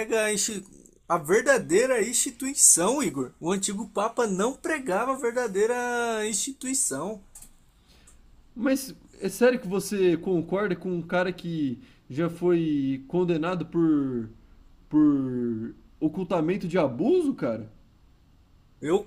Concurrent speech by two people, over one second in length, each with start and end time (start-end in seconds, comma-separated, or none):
none